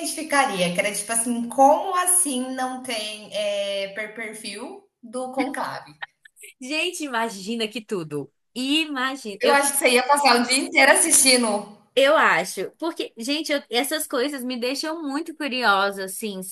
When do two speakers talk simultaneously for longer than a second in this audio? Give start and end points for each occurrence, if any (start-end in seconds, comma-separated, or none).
none